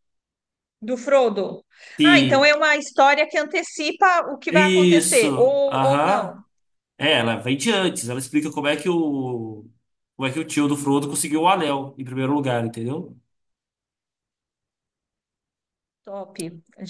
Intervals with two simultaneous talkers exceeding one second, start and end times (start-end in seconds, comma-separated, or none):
4.5-6.3